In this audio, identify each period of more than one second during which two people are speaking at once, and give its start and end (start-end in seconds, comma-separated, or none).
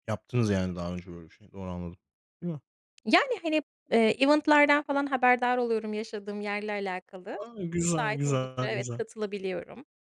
7.4-9.0